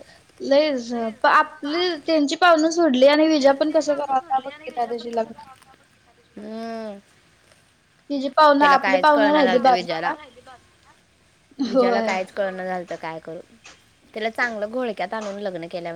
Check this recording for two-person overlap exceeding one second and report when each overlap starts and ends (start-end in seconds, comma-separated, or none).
8.6-10.1